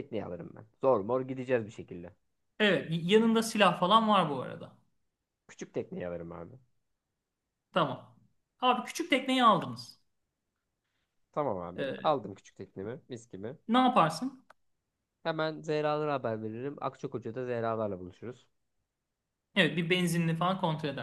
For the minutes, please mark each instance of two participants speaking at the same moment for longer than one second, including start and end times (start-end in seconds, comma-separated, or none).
none